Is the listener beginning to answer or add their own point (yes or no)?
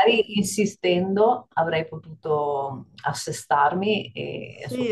yes